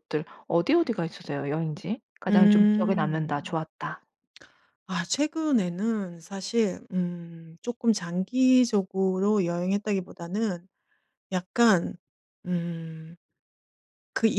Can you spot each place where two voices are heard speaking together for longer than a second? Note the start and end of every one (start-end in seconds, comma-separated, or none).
2.3-3.6